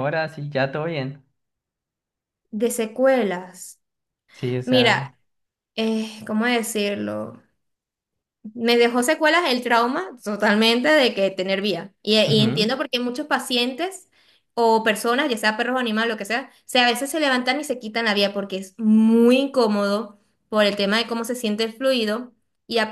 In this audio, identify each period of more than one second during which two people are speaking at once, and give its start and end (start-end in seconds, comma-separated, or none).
none